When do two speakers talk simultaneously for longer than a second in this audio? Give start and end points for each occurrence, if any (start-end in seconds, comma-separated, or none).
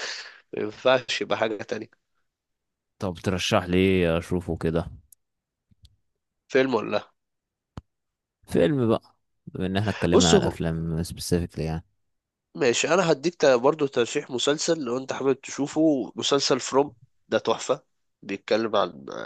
none